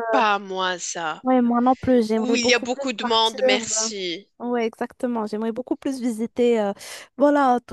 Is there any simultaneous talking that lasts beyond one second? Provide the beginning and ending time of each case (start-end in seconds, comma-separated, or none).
2.1-3.4